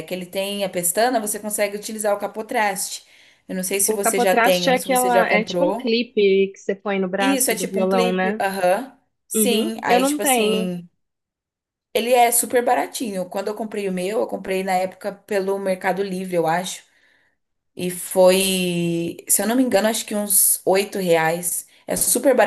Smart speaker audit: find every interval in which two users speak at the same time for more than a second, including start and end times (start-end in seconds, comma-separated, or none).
3.9-6.0, 7.2-8.4, 9.3-10.7